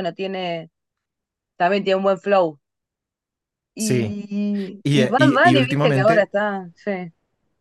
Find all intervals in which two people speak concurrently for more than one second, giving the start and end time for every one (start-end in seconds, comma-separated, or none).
4.8-6.3